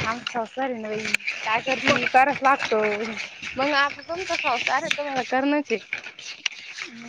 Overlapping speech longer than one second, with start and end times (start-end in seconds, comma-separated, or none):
none